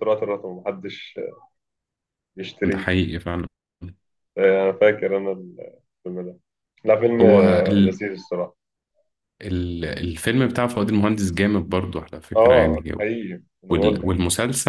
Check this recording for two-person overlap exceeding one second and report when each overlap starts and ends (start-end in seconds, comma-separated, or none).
none